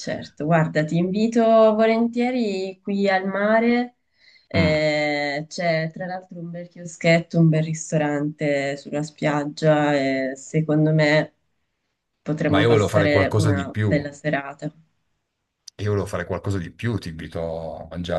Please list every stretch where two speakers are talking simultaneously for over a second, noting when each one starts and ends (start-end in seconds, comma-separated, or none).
12.5-13.9